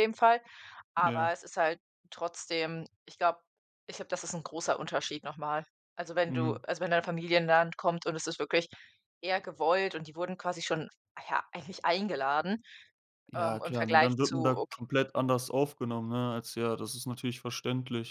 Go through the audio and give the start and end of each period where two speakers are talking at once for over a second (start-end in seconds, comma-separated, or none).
13.3-14.8